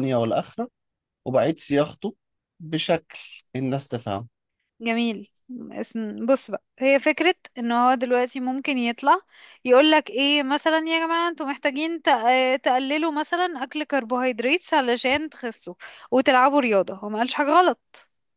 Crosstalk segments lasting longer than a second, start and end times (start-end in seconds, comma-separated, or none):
none